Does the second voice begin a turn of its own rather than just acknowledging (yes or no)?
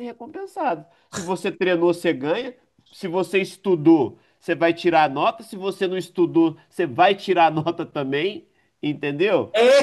yes